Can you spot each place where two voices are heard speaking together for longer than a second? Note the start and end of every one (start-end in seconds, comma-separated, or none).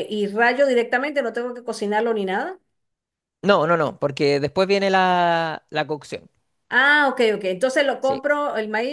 none